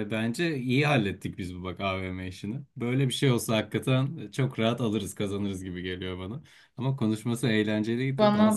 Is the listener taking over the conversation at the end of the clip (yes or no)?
no